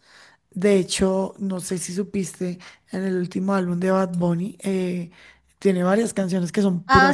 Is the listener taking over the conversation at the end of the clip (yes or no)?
yes